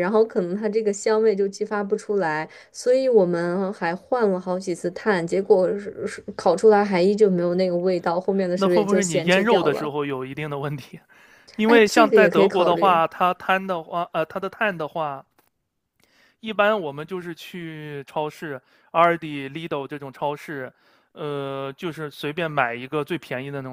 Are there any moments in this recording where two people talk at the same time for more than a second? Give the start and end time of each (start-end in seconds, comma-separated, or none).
8.6-9.9, 11.7-13.0